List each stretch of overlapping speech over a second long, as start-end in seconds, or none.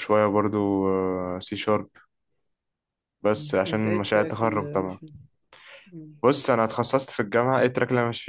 3.4-5.0